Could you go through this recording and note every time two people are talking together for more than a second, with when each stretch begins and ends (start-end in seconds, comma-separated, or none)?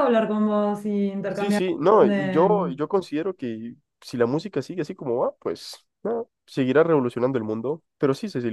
1.3-2.7